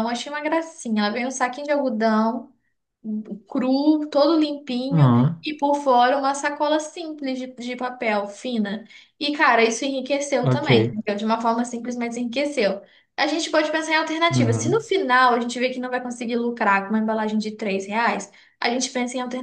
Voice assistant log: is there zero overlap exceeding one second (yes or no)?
yes